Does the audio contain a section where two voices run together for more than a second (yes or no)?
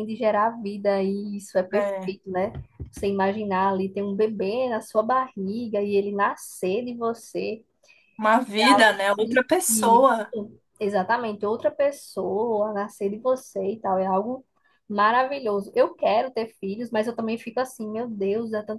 yes